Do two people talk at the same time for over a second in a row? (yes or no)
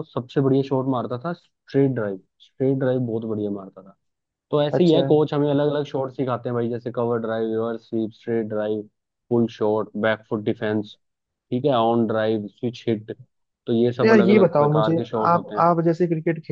yes